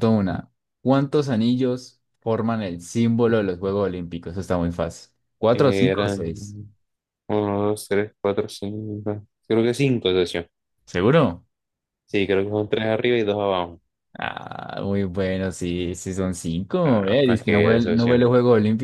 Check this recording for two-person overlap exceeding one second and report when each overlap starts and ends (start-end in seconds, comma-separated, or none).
16.8-18.3